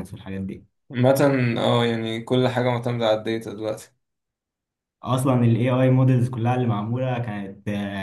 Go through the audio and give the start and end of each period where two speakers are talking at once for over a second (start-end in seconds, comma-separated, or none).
none